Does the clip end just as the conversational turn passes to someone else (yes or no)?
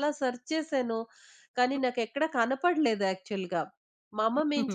no